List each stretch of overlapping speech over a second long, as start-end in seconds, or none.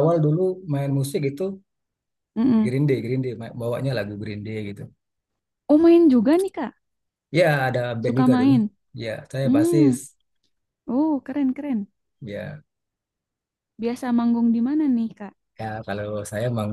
none